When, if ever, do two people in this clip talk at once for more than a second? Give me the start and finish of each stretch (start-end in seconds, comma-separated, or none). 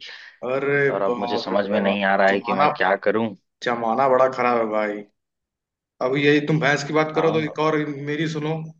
0.9-2.6